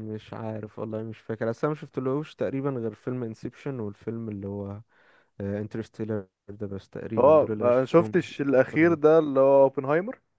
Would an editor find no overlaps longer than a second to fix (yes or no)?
no